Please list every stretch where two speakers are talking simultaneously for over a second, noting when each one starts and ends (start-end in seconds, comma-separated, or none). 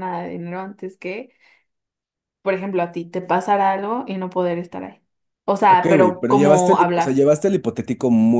5.7-7.3